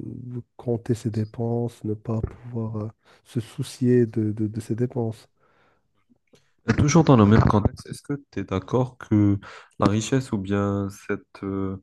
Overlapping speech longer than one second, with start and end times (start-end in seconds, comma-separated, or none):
none